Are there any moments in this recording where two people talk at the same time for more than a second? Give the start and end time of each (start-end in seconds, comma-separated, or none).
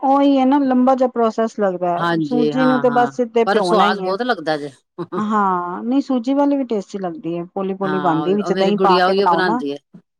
2.0-4.2, 7.8-9.6